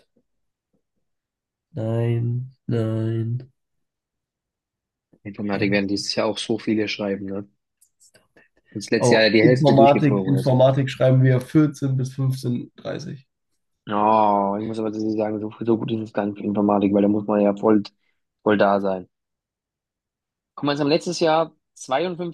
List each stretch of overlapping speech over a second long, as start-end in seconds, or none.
9.0-10.7